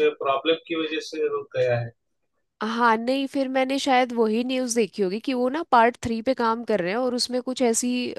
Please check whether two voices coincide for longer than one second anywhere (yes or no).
no